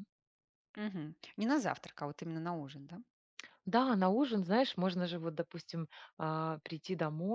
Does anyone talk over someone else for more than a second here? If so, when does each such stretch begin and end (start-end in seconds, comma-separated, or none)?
none